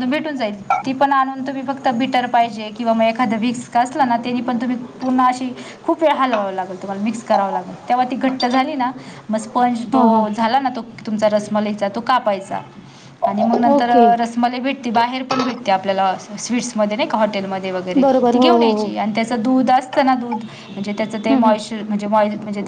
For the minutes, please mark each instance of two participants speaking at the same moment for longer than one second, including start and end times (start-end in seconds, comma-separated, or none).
none